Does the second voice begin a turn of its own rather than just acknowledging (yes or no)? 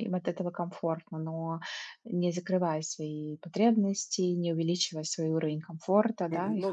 yes